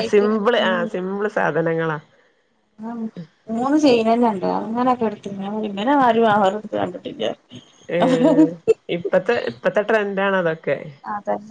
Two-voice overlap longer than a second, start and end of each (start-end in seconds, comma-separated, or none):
none